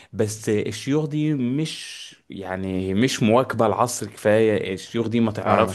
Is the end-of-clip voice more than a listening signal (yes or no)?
no